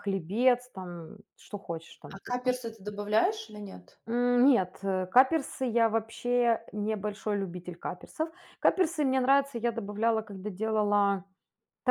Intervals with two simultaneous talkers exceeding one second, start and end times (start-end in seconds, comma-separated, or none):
none